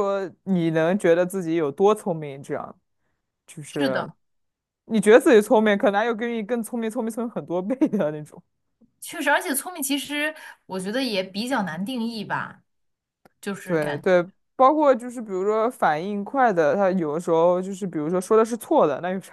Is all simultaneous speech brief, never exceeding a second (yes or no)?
yes